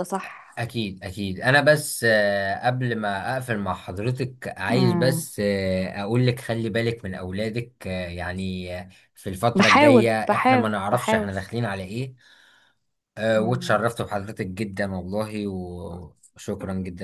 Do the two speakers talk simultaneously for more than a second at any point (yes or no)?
yes